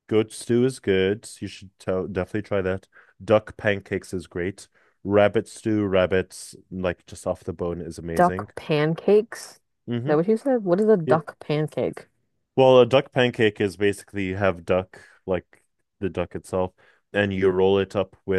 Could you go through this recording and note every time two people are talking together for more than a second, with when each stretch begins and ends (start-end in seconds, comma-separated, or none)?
none